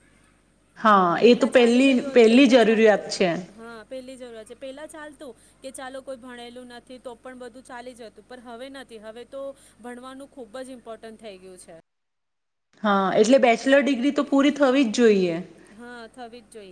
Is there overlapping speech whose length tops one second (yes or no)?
yes